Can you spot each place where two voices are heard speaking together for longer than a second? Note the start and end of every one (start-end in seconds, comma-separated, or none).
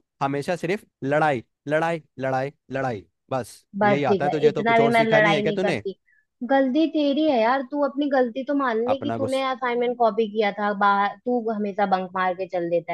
3.8-5.8